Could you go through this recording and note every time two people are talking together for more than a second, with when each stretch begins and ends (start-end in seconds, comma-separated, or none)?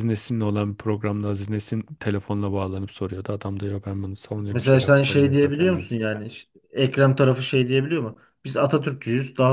4.5-5.9